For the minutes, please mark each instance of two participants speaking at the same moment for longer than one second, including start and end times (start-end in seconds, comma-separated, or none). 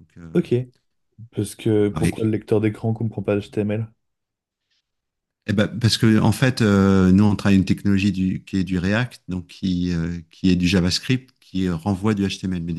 none